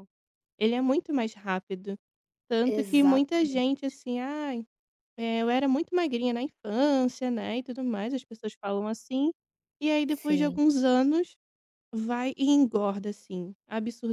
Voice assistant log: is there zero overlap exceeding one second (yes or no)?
no